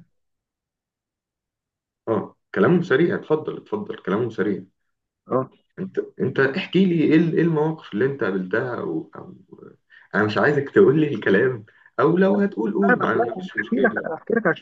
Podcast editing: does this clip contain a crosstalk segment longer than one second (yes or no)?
yes